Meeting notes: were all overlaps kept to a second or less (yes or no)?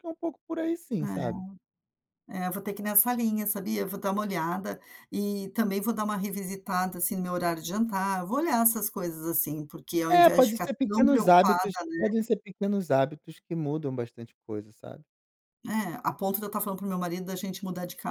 no